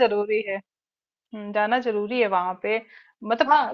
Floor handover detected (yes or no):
no